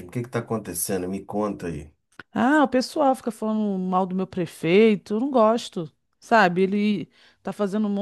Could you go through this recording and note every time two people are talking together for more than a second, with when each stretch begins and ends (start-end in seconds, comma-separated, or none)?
none